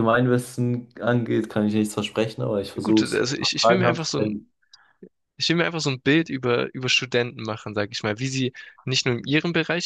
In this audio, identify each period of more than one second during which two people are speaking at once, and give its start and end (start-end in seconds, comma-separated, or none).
2.8-4.4